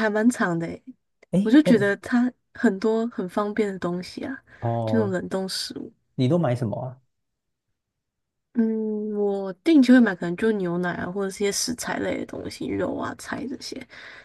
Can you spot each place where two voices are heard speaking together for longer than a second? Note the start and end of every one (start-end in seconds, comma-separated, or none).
none